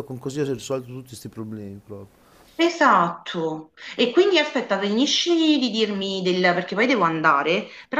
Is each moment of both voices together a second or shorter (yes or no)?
yes